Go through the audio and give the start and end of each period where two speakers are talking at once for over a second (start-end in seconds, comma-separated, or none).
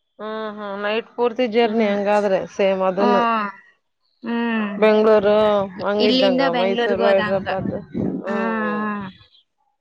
6.1-7.5